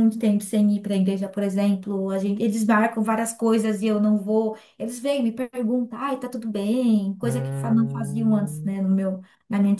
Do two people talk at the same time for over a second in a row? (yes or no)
yes